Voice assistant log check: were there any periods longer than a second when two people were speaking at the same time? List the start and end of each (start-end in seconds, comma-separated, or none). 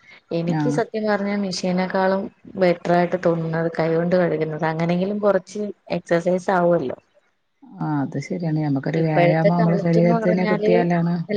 9.0-10.7